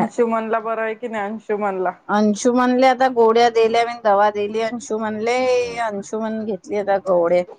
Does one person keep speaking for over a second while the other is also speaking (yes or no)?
no